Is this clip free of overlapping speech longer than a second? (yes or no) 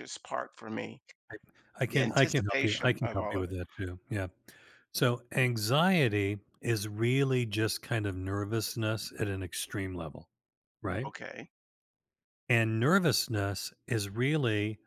no